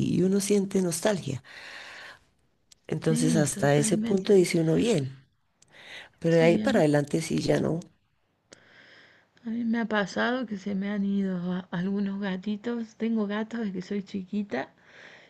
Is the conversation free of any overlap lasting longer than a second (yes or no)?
no